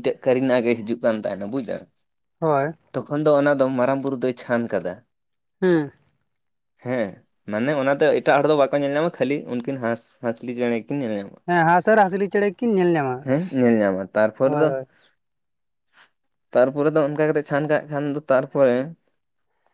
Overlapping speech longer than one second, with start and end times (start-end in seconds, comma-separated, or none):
11.9-13.2